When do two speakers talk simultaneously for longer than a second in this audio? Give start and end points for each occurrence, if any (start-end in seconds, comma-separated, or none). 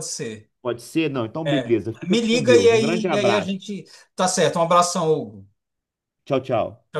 1.5-3.6